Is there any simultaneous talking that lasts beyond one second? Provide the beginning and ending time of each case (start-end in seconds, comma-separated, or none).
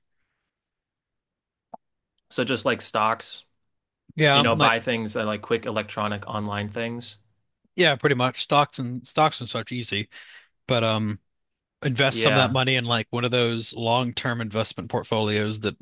none